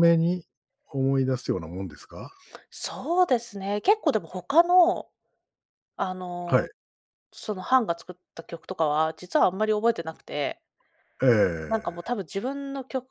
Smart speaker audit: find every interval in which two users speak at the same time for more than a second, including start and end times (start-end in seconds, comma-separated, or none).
none